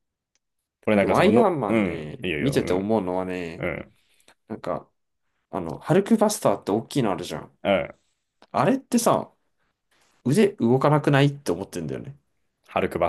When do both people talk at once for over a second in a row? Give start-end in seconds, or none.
1.0-3.0